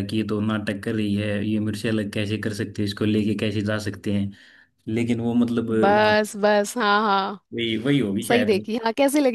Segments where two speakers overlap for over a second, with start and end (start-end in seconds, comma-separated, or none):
none